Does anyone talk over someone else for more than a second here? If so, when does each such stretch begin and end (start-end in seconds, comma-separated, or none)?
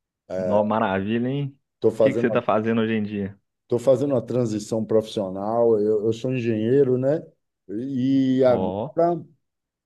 none